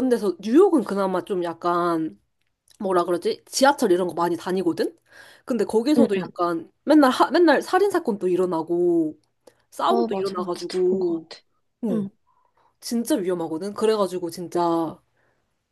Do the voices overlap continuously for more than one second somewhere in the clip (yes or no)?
yes